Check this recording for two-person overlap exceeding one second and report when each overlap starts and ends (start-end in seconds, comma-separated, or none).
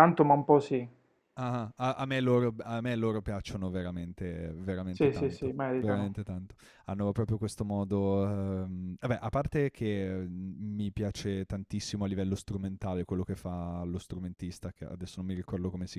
4.9-6.2